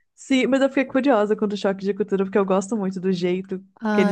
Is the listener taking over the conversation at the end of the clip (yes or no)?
yes